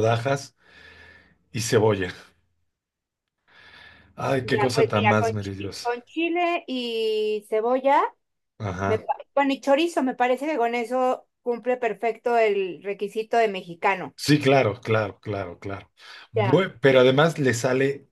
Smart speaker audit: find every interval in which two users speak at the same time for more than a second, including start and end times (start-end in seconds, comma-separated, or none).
4.4-5.9